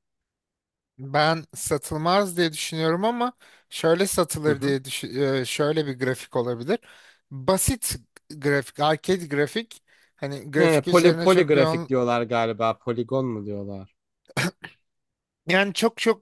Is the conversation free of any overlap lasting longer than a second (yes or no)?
no